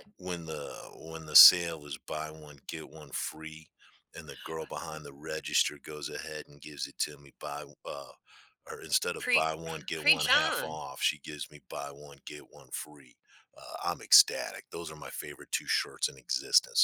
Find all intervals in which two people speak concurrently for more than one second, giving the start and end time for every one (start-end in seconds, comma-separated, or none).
9.2-10.8